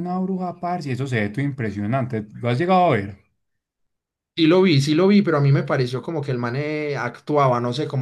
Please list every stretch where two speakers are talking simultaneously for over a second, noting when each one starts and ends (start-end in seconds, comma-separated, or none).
none